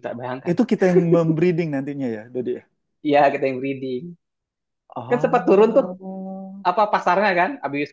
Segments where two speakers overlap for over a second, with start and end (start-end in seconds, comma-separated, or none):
none